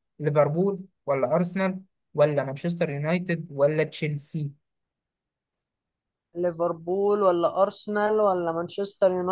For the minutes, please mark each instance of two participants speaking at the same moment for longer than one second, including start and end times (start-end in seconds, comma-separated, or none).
none